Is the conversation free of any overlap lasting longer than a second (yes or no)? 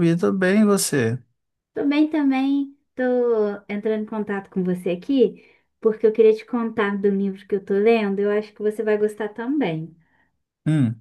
yes